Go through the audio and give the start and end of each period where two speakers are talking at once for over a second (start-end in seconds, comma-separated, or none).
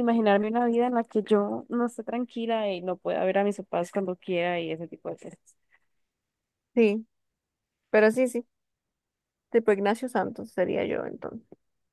none